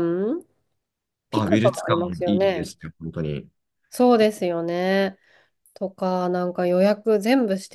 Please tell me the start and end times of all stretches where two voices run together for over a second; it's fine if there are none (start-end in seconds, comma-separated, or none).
1.3-2.7